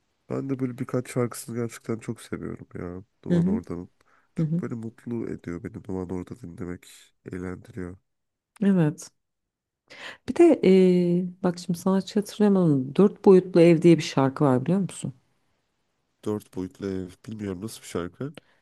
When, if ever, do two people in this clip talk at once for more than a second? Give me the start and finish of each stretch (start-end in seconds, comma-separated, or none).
none